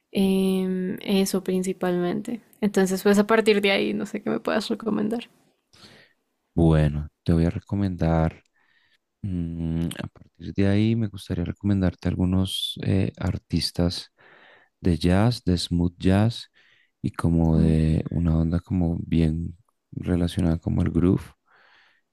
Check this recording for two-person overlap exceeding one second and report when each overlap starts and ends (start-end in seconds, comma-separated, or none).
none